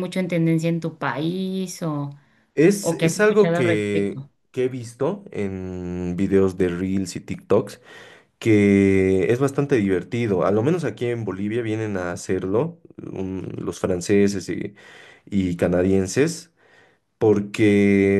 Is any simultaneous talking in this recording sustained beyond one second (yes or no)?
yes